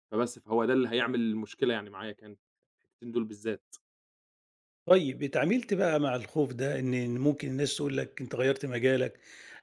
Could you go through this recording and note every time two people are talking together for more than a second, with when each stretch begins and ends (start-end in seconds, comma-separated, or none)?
none